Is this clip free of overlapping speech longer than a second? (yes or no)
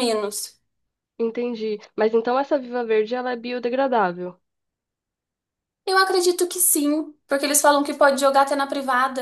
yes